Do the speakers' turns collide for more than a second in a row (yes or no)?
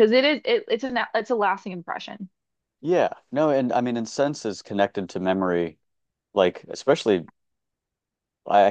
no